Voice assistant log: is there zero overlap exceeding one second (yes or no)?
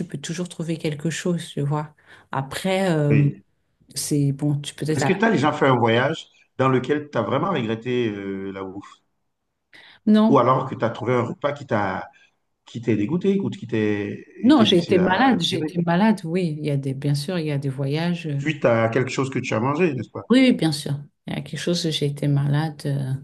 no